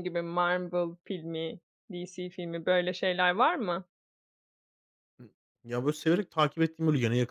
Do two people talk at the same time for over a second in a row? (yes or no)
no